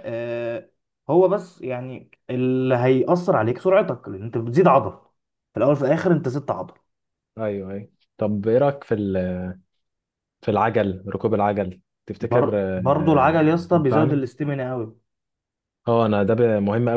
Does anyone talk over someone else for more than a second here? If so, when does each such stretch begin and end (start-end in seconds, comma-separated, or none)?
12.2-14.3